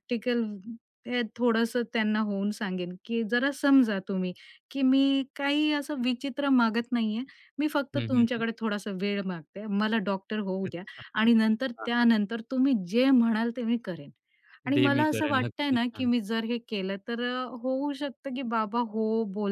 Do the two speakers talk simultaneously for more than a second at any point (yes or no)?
yes